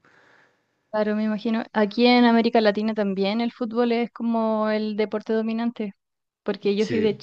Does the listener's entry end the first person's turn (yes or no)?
no